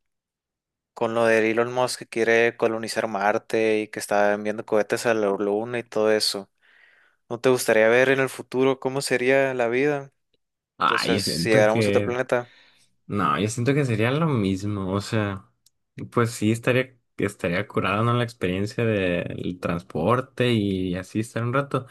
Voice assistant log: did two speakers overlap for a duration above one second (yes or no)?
yes